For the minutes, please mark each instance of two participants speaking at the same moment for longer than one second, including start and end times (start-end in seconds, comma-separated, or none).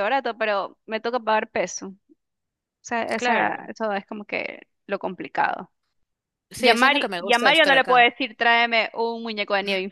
6.6-8.1